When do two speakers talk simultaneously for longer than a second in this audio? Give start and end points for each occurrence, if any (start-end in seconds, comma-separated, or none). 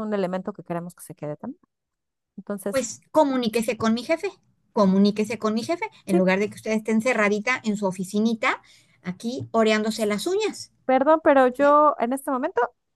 none